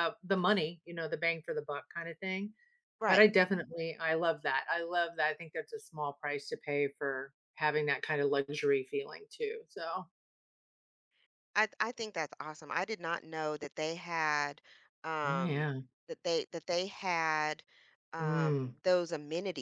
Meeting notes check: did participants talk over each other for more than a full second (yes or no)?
no